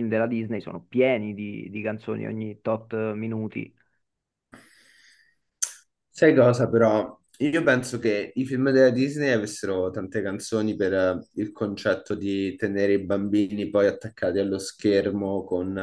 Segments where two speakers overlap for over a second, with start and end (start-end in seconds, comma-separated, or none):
none